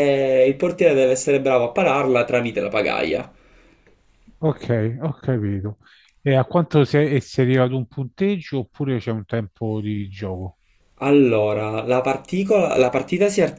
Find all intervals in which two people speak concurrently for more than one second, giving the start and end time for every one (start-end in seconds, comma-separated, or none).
none